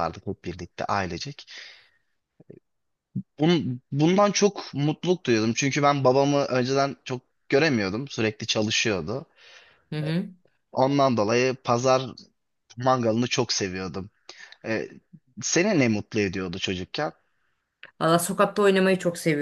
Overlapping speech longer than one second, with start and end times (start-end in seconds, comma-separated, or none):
none